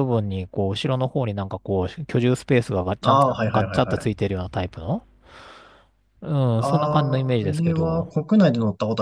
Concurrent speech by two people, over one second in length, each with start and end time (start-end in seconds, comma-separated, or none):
3.0-4.3, 6.6-8.1